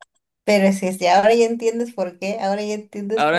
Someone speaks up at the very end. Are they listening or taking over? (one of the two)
taking over